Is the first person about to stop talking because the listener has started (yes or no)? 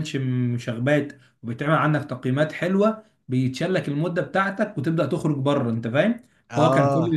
no